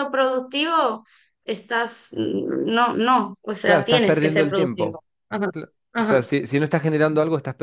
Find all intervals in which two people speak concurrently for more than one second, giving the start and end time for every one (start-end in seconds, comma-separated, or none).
3.6-5.0